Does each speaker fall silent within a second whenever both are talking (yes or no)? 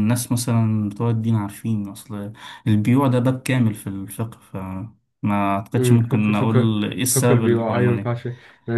no